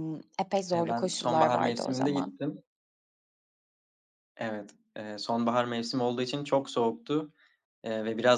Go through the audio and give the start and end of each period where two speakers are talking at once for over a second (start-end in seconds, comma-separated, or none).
0.7-2.4